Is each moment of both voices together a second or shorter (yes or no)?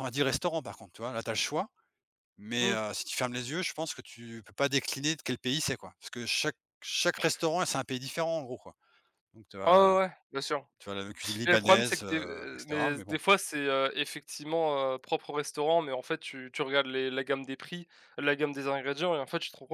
no